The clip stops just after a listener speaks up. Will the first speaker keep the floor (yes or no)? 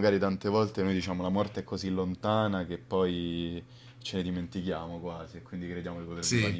yes